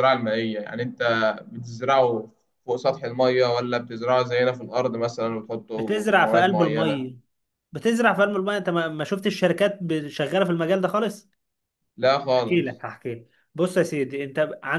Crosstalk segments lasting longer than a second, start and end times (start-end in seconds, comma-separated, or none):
5.8-7.0